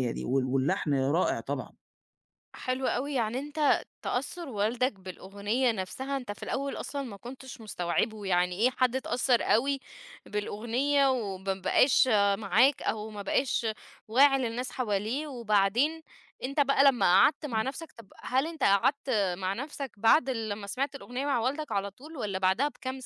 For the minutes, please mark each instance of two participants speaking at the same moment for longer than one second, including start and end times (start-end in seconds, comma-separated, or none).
none